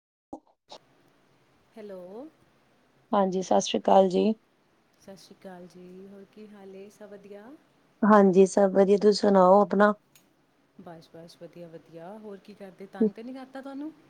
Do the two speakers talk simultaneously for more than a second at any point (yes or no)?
no